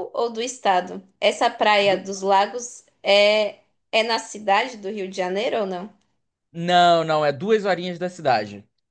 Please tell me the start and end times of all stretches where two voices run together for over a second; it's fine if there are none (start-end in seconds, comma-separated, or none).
none